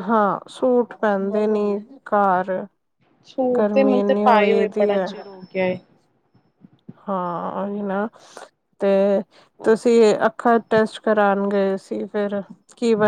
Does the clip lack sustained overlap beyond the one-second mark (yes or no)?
no